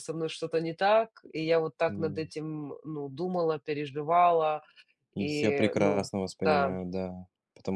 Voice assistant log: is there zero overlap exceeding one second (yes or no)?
no